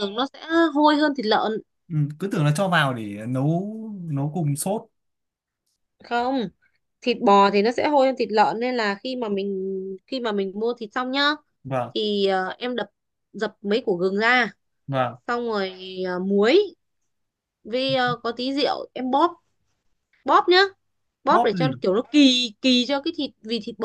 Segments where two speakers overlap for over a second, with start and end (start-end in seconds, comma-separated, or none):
none